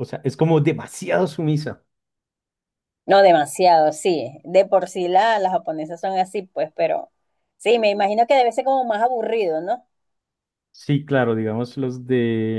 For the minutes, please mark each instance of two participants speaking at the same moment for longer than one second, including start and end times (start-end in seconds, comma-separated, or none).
none